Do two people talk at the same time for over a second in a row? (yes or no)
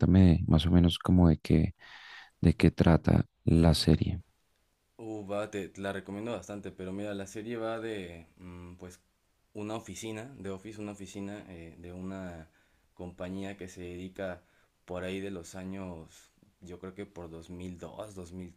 no